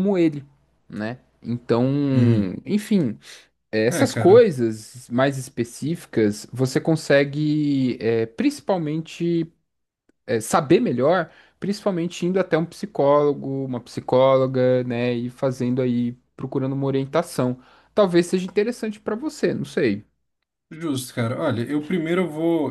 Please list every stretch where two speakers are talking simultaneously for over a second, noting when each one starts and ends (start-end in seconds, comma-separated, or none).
none